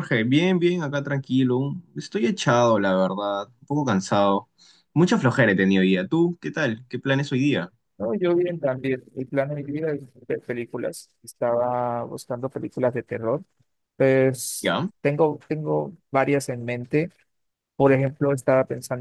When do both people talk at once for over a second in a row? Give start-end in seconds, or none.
none